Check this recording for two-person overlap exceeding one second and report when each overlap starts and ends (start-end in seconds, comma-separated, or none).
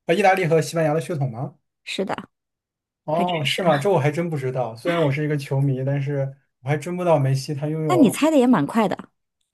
none